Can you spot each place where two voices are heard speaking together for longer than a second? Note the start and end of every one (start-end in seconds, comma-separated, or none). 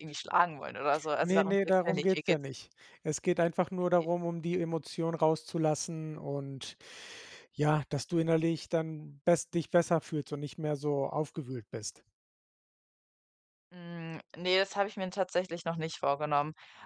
1.2-2.5